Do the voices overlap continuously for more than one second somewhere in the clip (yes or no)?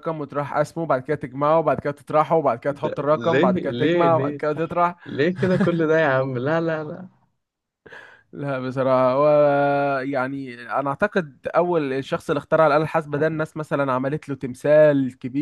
yes